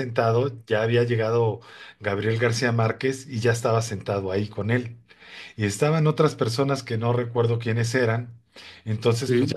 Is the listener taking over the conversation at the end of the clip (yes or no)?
no